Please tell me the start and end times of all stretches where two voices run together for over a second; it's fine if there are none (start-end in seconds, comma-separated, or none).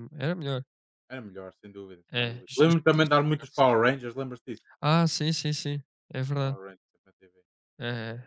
2.1-3.6